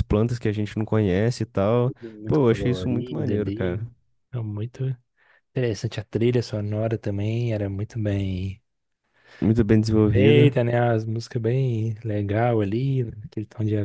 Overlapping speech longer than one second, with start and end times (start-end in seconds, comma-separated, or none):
1.9-3.8